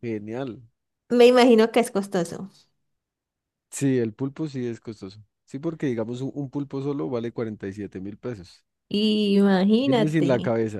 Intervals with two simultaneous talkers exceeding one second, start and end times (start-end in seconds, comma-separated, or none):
none